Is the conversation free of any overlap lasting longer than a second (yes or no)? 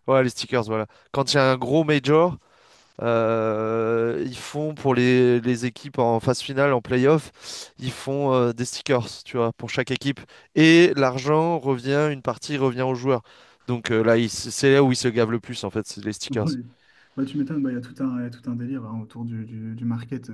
yes